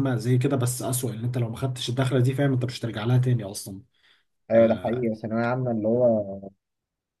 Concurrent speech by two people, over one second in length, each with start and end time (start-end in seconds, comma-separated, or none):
none